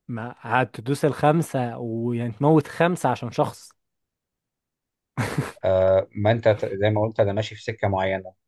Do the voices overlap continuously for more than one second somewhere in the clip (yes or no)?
no